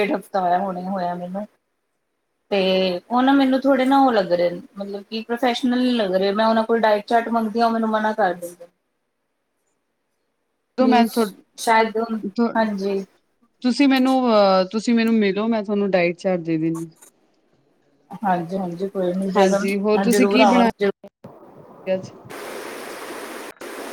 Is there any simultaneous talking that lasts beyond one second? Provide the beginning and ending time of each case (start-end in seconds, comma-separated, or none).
none